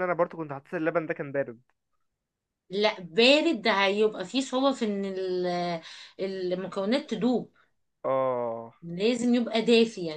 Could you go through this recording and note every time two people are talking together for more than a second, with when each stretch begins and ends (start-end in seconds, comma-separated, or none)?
none